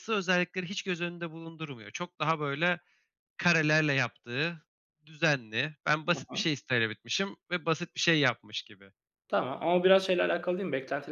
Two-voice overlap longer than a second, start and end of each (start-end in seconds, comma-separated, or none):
none